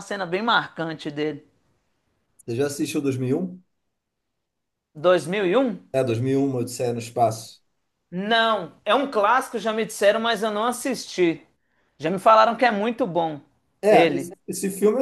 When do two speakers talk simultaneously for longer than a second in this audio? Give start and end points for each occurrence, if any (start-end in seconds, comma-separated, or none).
none